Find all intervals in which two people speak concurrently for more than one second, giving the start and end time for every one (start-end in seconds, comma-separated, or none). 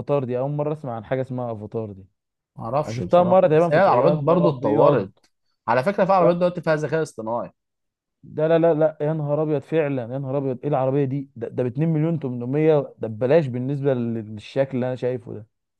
2.9-5.1